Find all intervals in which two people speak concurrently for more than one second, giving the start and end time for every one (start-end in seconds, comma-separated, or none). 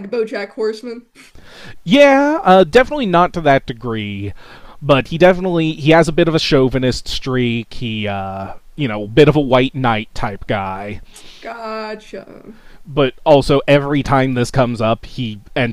none